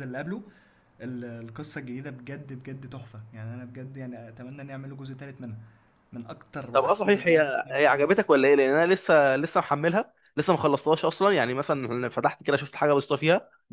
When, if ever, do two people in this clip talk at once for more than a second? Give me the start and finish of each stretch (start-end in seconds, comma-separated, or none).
6.7-8.1